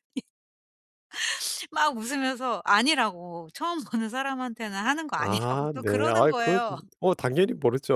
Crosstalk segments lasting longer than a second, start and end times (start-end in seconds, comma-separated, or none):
5.2-6.6